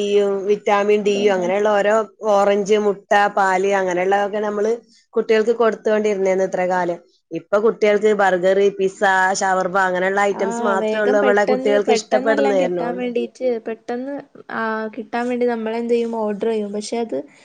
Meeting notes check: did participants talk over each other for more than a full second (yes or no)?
yes